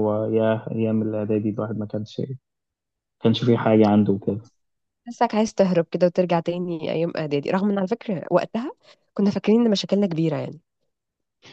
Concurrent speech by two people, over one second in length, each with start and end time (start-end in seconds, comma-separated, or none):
none